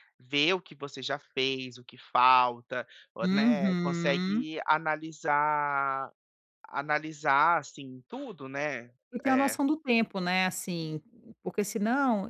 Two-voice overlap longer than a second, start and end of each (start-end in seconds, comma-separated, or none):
3.2-4.5